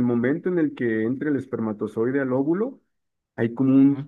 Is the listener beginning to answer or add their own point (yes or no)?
no